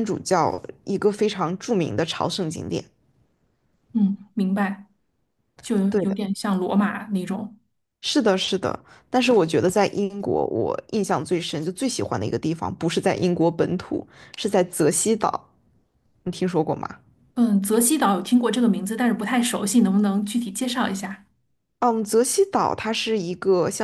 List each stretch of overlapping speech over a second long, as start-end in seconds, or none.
none